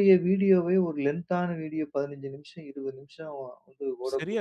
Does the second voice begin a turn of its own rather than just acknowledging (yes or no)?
yes